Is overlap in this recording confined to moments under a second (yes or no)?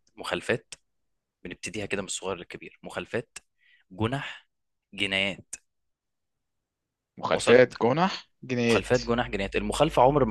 yes